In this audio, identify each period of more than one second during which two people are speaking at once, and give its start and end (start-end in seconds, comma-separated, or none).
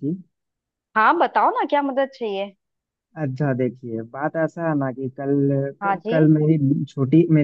none